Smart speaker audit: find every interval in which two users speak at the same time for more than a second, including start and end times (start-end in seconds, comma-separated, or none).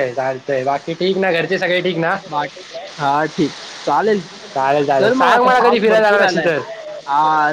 5.0-6.5